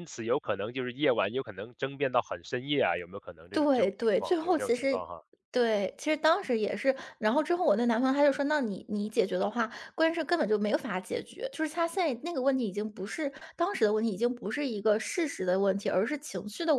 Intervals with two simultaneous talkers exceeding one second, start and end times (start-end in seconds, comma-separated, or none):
3.5-5.0